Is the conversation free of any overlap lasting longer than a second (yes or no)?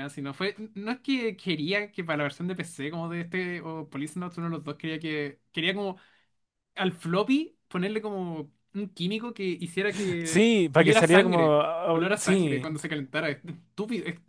no